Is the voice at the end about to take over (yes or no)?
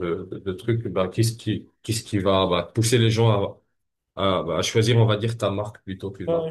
yes